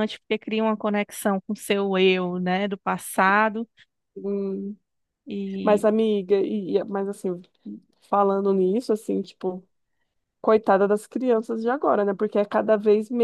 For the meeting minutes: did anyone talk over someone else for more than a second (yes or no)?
no